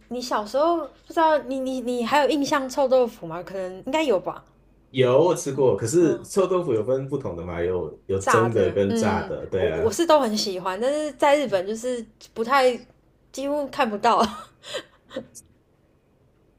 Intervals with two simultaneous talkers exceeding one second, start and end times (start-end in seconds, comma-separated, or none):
8.2-10.0